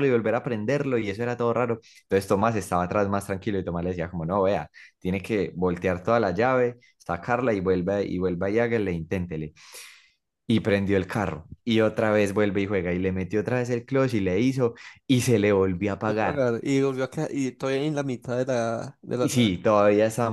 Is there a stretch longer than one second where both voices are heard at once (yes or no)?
no